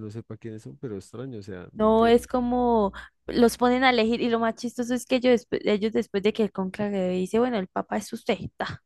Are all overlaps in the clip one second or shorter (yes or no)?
yes